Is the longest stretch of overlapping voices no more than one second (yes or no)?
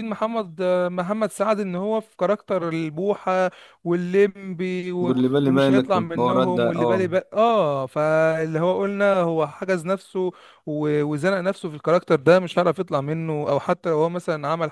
no